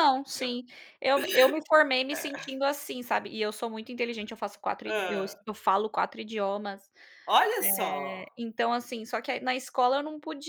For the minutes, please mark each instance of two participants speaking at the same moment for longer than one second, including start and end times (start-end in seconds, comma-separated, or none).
none